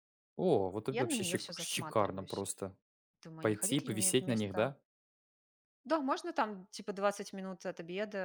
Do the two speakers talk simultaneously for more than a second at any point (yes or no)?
yes